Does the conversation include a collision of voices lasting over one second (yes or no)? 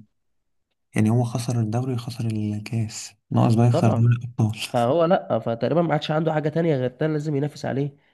no